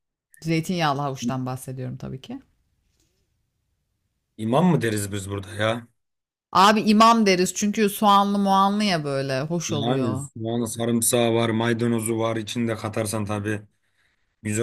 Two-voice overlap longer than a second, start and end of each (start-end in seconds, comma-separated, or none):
none